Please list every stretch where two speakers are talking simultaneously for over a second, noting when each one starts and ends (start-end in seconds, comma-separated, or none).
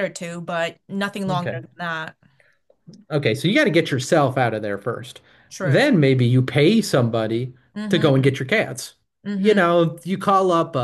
none